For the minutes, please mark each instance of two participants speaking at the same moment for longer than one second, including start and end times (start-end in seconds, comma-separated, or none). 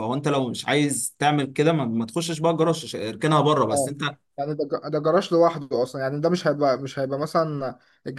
none